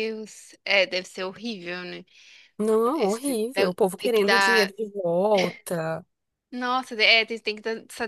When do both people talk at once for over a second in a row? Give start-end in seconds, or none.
2.9-4.7